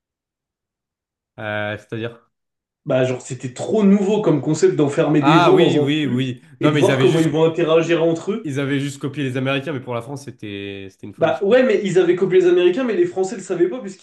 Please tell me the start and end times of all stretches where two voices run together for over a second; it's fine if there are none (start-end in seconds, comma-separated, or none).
5.2-7.3